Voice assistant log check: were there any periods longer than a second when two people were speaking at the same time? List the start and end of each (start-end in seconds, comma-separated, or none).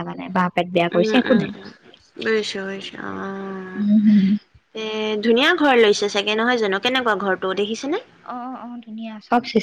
none